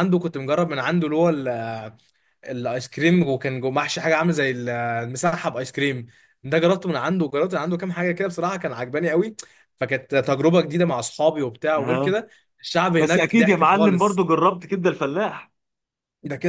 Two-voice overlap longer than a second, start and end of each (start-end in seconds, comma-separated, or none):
13.0-14.2